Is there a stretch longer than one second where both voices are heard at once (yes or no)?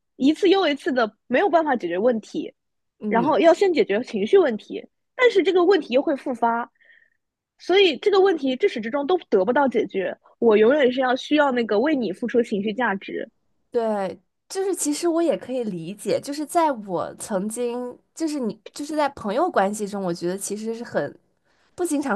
no